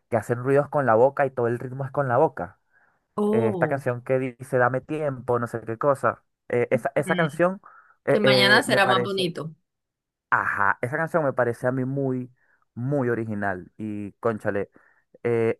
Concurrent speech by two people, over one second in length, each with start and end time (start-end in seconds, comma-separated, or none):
8.1-9.3